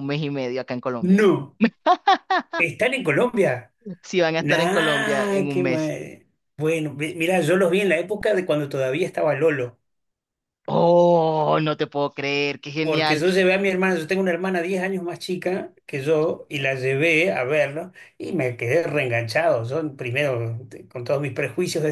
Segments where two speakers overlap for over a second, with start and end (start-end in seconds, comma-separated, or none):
4.4-5.9